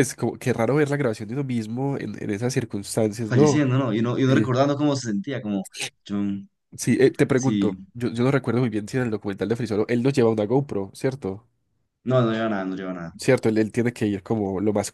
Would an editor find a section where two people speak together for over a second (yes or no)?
no